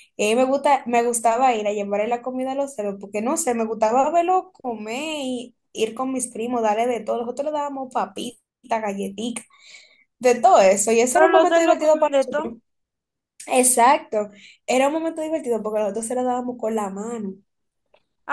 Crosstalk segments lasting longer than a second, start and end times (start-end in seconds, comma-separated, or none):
11.1-12.5